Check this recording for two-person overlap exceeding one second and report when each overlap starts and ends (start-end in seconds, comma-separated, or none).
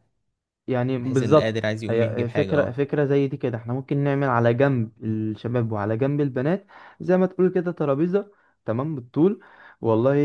1.0-2.8